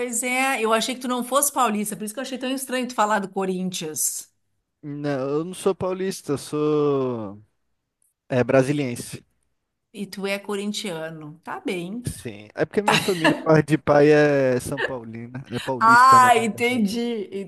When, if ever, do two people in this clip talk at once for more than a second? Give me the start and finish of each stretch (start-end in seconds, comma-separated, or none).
none